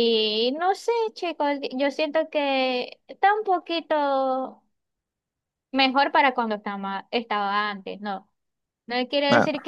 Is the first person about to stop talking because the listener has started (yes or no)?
no